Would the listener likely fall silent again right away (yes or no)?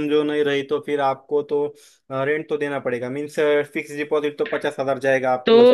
no